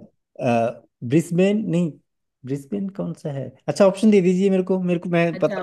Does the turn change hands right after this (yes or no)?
yes